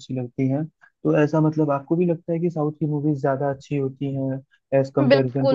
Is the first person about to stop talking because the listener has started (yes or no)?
yes